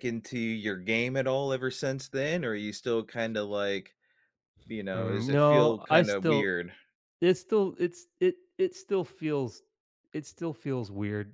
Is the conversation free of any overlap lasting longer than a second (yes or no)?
no